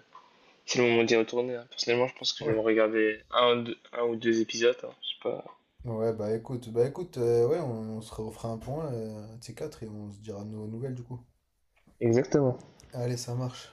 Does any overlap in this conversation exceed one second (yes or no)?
no